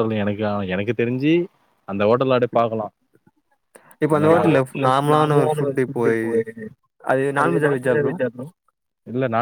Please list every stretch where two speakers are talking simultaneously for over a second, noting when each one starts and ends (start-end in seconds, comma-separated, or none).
4.2-6.0